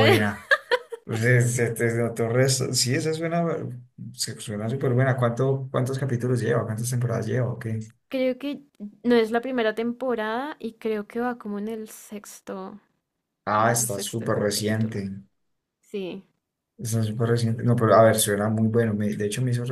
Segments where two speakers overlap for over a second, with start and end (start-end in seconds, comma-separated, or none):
13.5-15.0